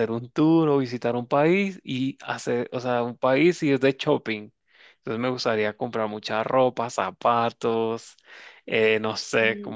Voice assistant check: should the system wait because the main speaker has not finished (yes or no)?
yes